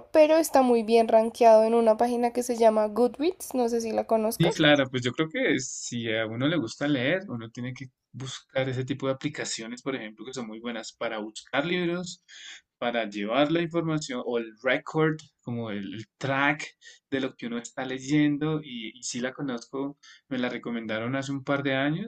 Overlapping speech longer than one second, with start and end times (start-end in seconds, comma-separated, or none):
none